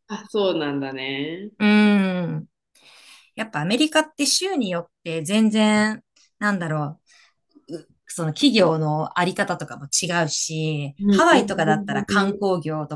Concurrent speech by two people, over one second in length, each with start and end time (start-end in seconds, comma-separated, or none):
11.0-12.4